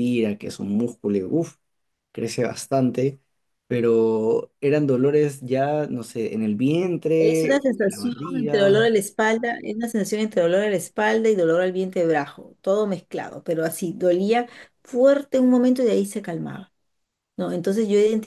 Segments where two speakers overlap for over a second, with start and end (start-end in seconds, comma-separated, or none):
7.2-8.9